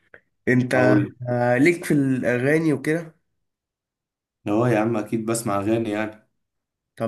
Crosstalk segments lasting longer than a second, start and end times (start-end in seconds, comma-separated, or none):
none